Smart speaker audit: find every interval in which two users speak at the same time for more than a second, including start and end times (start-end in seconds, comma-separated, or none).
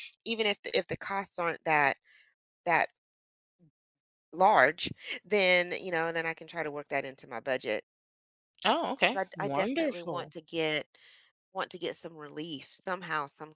9.0-10.3